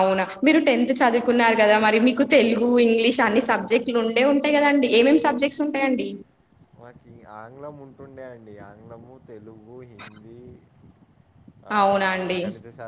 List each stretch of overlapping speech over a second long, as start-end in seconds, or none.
none